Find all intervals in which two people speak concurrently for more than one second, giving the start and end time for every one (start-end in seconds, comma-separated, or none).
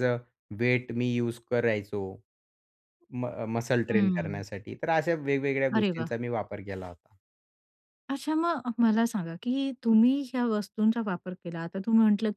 none